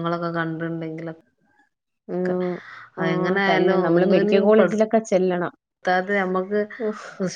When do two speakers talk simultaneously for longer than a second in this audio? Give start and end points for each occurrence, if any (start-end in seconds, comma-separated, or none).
3.0-4.7